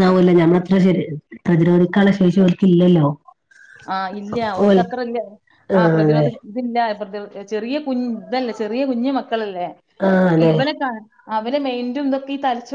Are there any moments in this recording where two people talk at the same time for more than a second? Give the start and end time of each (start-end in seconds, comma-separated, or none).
none